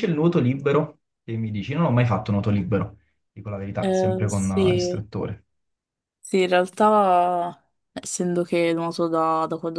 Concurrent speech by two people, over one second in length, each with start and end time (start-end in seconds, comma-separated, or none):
3.8-5.0